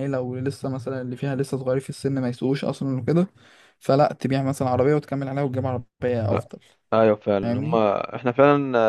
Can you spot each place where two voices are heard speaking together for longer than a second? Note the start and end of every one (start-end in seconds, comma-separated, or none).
none